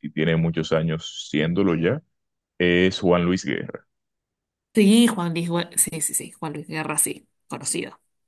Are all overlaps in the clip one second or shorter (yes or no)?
yes